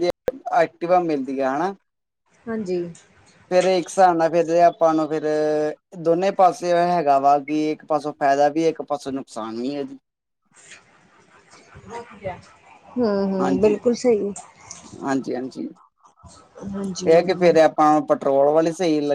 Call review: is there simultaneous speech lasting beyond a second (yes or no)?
no